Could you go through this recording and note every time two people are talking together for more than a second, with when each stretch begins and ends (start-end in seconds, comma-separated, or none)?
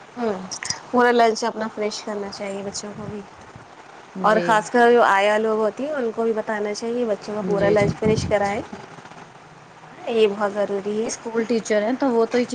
none